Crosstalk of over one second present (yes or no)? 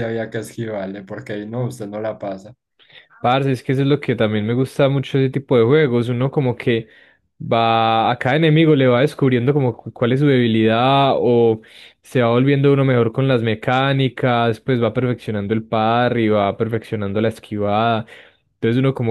no